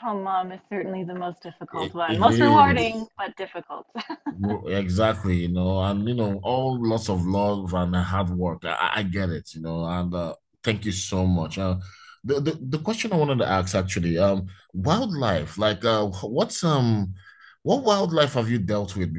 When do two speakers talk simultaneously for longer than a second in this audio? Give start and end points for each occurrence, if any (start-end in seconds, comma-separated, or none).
1.7-3.1